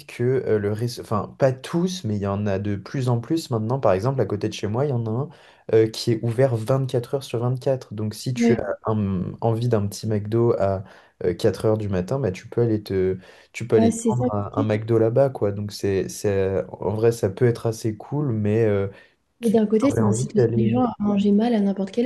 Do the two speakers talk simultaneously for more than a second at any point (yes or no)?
yes